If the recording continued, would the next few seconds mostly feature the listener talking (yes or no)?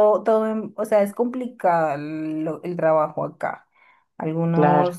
no